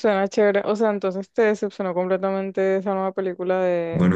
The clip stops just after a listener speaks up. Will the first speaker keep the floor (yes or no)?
no